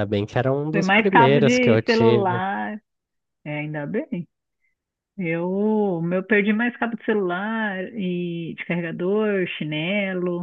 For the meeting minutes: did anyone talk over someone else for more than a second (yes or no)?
yes